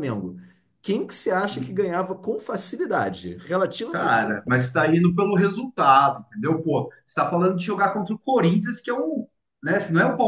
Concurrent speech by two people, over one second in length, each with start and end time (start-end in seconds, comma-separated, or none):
none